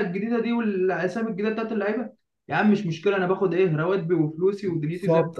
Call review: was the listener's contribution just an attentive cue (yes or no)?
no